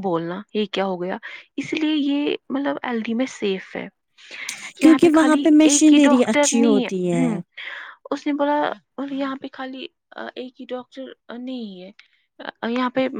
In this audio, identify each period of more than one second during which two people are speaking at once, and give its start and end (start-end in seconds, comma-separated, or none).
4.8-7.1